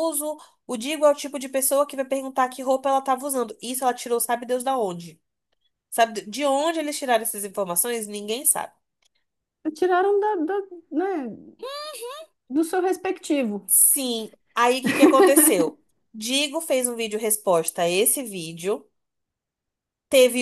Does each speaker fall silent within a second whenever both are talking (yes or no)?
yes